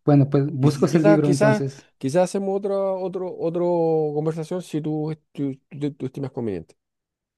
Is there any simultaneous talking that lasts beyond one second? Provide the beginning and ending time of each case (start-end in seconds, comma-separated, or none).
0.6-1.9